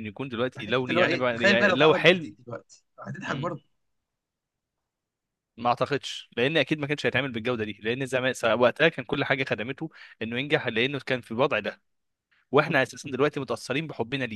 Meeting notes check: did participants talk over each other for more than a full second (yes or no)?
yes